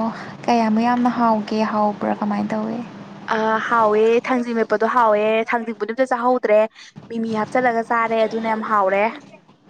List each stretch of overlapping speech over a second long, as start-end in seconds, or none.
none